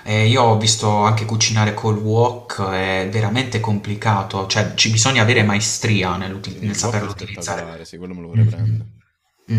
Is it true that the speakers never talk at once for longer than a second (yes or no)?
no